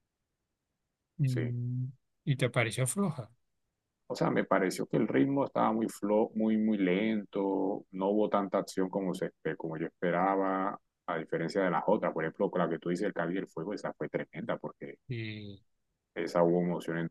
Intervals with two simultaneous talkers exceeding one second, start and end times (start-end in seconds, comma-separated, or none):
none